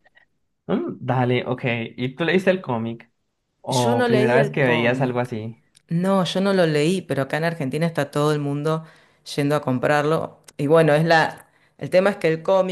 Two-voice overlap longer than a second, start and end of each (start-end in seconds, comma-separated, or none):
3.7-5.3